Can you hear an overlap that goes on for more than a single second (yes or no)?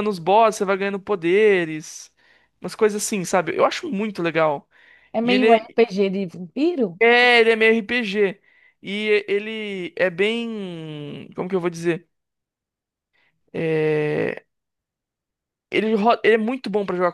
no